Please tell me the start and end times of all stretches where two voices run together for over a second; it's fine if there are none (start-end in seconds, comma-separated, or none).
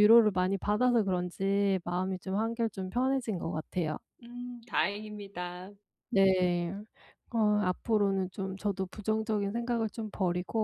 none